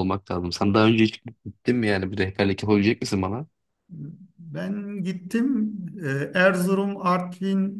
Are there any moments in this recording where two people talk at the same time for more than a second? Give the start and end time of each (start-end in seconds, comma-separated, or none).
none